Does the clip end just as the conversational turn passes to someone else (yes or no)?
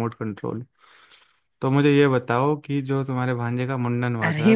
yes